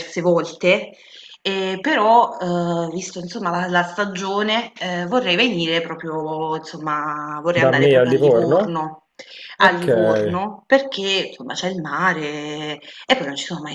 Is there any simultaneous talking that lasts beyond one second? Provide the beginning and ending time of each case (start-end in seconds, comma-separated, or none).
7.5-8.8